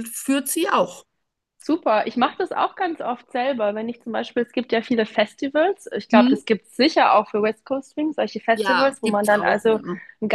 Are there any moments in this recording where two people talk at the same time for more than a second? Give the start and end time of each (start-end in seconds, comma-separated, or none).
8.5-9.8